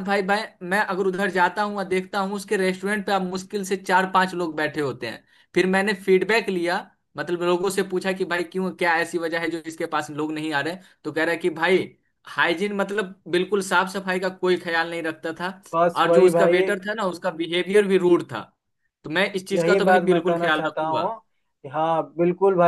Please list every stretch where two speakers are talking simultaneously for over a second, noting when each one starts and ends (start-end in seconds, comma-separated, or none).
19.5-21.1